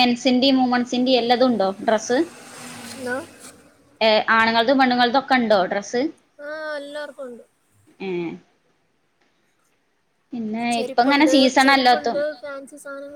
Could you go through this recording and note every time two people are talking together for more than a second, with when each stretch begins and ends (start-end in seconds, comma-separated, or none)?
10.8-12.2